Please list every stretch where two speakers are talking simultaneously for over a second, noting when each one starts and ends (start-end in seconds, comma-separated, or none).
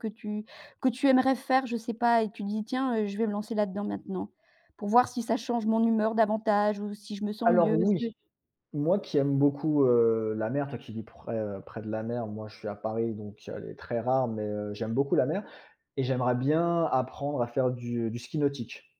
none